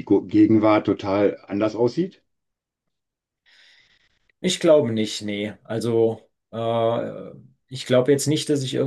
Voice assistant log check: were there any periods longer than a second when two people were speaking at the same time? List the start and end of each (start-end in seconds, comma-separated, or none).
none